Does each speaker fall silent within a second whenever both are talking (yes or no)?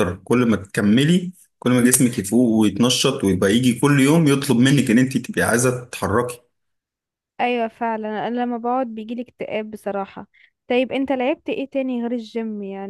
yes